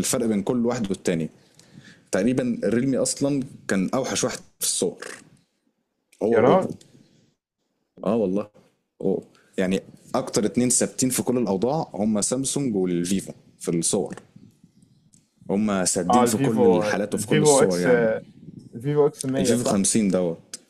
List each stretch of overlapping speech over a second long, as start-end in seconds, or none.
16.1-17.9